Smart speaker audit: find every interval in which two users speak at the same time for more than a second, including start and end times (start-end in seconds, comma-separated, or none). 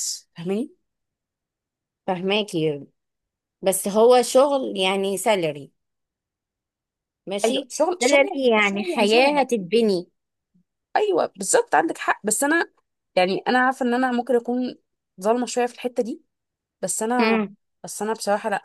7.5-9.4